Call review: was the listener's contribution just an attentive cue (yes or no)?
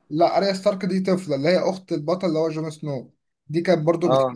yes